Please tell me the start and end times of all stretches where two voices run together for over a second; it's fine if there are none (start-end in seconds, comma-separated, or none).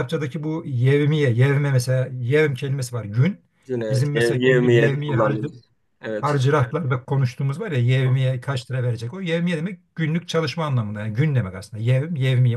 3.9-5.5